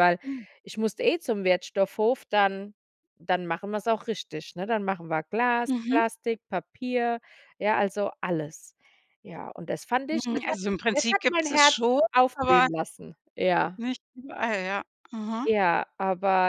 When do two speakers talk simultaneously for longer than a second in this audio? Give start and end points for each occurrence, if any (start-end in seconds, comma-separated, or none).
10.1-12.7